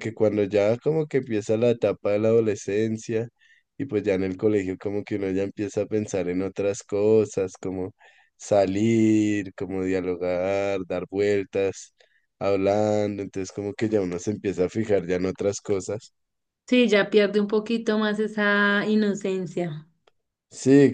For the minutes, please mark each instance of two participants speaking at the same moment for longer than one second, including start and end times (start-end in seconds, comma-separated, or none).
none